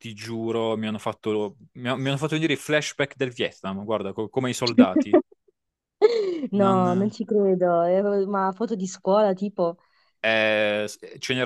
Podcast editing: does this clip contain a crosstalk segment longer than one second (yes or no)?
no